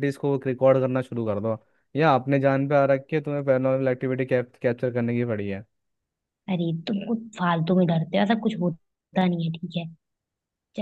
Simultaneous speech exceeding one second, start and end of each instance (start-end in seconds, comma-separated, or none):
none